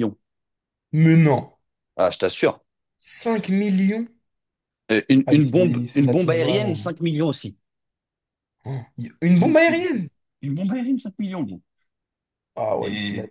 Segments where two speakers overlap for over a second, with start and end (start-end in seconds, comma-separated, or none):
5.2-6.9